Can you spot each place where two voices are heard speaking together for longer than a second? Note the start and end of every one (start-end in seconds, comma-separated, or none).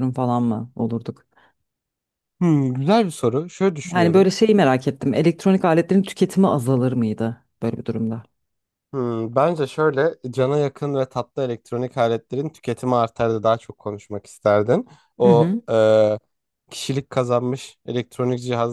none